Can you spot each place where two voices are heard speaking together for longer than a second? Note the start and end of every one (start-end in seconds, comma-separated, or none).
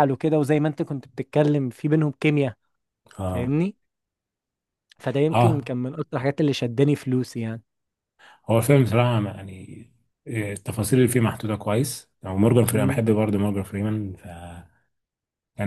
none